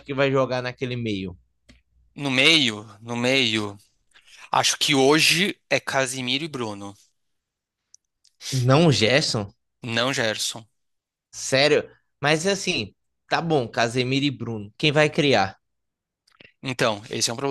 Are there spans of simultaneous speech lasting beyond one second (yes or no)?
no